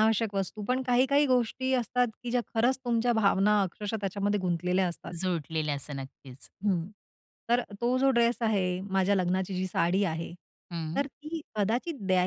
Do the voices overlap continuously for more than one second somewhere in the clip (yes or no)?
no